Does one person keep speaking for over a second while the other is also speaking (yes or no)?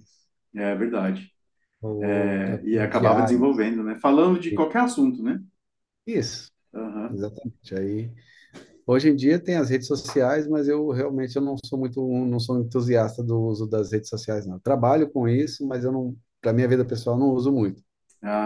yes